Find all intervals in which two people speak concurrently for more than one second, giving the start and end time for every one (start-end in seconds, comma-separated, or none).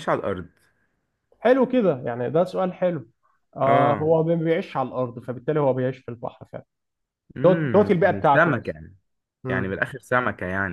7.4-8.8